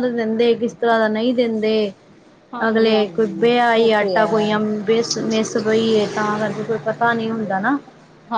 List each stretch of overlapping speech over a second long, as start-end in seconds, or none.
2.7-4.5